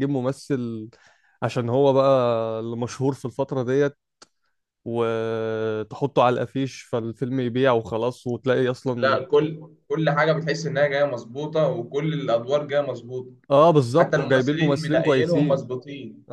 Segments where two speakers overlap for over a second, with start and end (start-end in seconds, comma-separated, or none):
14.0-15.8